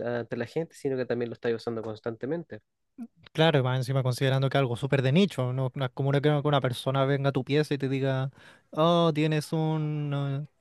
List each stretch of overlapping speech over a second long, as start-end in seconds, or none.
none